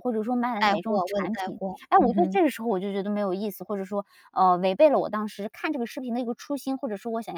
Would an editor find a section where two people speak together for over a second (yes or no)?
yes